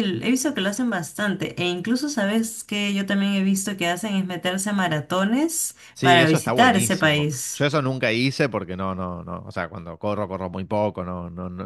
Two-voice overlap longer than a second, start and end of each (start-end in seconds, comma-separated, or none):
5.9-7.7